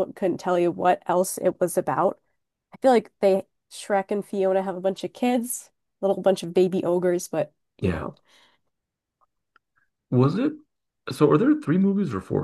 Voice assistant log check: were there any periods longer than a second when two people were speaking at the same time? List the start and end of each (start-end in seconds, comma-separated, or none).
none